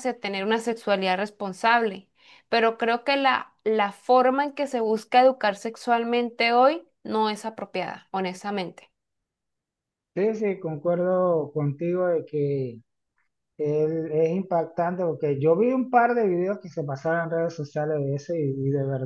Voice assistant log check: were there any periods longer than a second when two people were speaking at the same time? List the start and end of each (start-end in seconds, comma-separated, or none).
none